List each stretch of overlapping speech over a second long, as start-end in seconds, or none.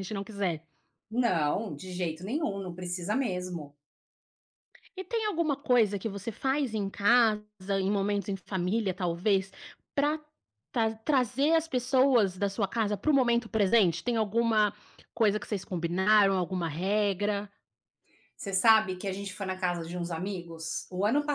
none